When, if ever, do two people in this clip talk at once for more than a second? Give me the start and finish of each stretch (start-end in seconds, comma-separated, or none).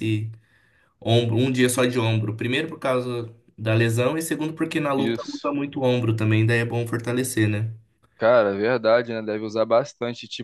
none